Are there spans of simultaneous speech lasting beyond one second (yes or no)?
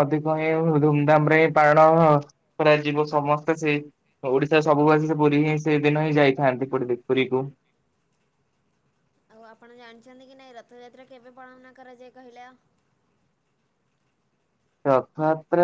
no